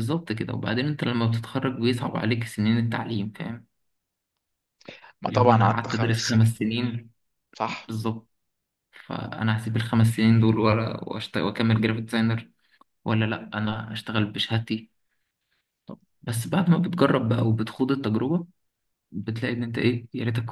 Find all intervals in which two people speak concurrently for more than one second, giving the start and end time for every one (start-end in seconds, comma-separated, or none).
5.3-6.6